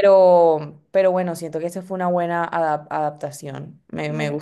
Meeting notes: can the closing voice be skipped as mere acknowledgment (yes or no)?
no